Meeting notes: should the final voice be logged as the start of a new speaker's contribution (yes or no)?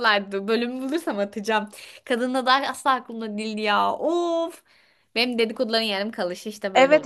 yes